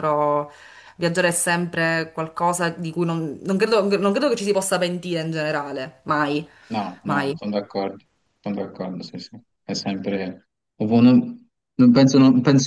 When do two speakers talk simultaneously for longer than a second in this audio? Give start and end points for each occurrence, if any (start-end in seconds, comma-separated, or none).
none